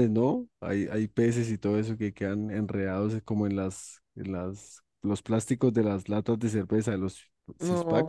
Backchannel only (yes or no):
no